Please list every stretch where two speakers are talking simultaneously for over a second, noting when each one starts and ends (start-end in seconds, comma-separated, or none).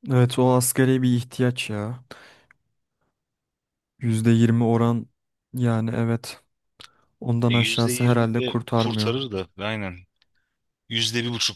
7.5-9.1